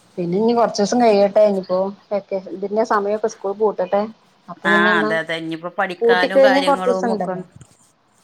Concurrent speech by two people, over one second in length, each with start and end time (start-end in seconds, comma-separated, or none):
6.0-7.3